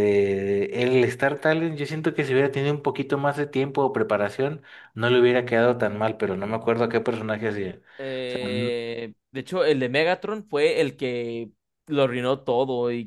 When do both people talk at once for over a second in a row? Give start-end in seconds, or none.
none